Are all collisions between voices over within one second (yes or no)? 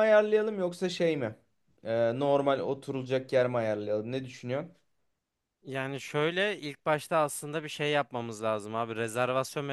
yes